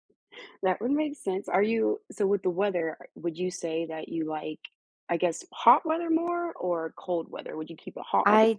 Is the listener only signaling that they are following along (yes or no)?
no